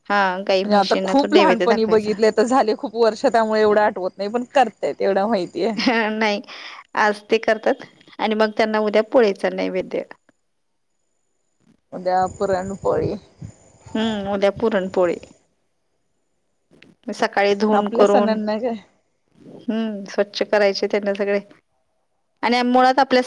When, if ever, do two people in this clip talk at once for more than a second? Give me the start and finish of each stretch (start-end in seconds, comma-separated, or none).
0.6-2.1